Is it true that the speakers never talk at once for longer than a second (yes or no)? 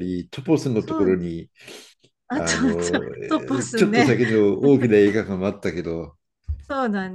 no